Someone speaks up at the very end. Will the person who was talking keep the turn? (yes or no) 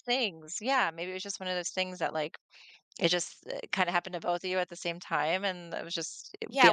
no